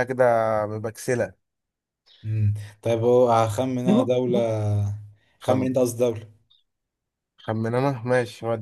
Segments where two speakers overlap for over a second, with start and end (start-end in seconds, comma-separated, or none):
none